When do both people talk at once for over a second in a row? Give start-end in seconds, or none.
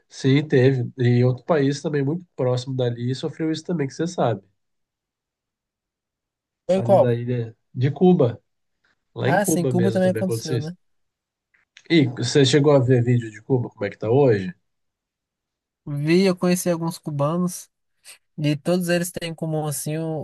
9.2-10.7